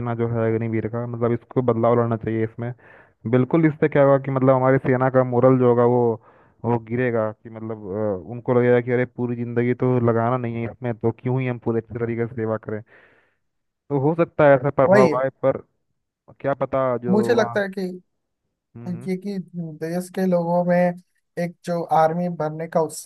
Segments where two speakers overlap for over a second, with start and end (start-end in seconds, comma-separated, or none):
none